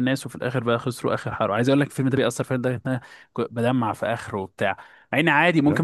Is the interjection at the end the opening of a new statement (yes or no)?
no